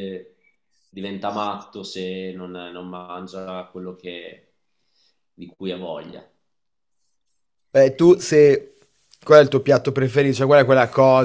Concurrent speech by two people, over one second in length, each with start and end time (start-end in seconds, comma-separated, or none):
none